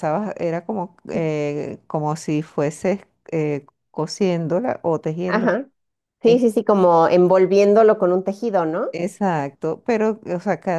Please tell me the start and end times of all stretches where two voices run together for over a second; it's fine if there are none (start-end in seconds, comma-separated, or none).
none